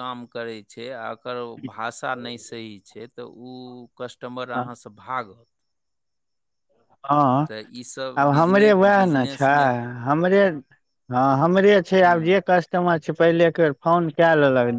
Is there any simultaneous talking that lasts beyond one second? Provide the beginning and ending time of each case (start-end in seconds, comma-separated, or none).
none